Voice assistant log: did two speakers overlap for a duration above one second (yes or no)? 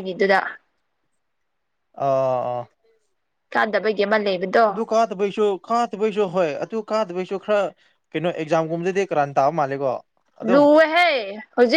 no